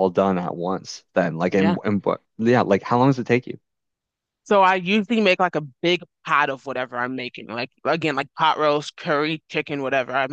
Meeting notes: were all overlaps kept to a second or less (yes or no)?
yes